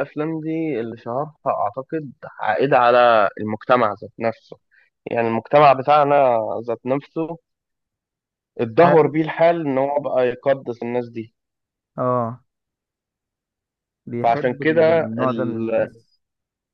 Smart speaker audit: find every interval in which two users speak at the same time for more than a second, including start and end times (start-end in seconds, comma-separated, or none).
14.2-15.7